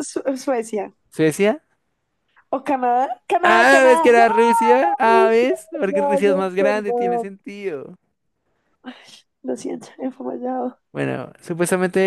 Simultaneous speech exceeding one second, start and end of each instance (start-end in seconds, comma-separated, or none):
3.4-7.3